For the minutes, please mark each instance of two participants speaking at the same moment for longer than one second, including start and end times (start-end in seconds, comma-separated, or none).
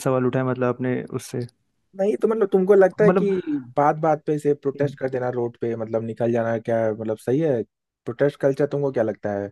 none